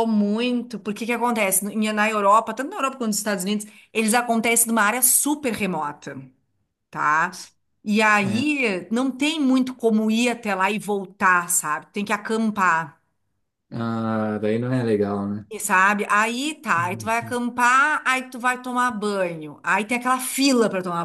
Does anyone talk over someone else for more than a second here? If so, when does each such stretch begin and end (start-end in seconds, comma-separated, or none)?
none